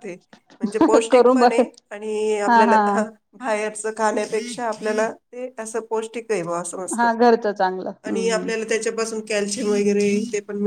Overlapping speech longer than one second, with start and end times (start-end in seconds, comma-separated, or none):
none